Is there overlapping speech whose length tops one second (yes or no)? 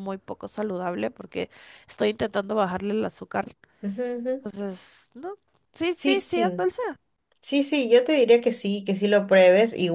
no